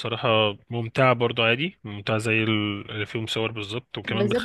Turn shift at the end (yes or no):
yes